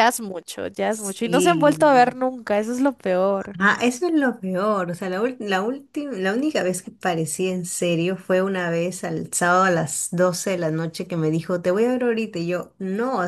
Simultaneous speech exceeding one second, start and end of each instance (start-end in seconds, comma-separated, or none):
0.9-2.1